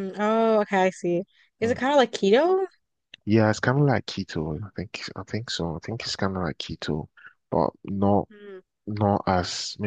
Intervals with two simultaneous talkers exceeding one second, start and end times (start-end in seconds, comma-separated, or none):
none